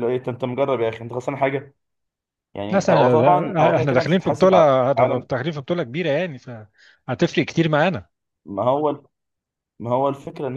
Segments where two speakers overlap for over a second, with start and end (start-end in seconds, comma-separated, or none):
2.7-4.9